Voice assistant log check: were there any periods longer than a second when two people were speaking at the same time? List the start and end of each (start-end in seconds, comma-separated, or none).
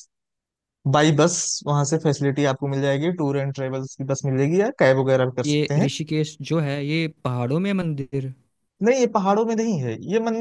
none